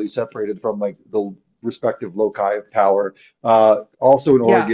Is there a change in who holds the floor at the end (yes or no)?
no